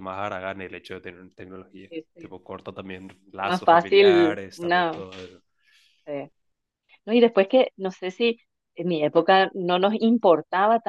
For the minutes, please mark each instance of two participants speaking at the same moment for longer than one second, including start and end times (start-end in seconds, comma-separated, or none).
3.4-5.0